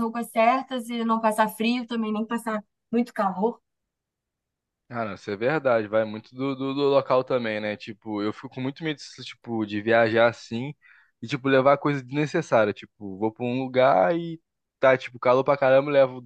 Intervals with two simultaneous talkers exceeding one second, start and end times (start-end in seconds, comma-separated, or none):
none